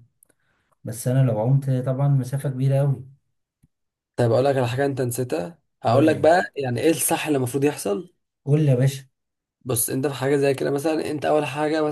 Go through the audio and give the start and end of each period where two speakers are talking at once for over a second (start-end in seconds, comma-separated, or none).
none